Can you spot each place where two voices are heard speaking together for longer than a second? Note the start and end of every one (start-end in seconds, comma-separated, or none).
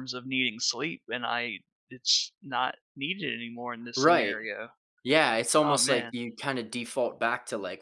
none